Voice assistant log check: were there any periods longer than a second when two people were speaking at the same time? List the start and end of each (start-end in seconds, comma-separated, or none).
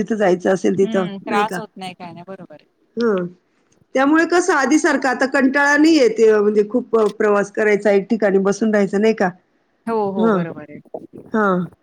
0.8-2.6